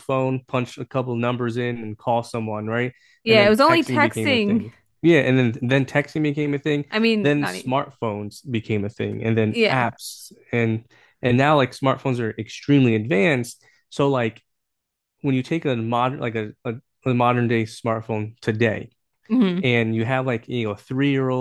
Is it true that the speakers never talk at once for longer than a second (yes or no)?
no